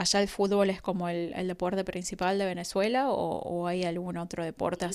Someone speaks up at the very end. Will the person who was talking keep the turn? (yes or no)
no